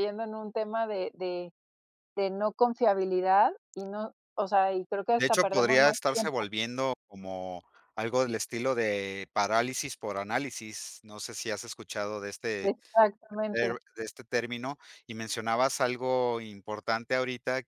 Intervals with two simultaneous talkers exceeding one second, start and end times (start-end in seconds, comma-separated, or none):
5.2-6.5